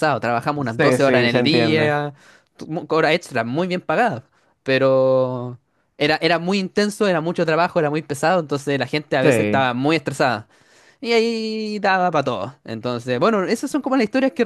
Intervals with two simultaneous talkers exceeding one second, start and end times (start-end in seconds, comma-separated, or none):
0.6-1.9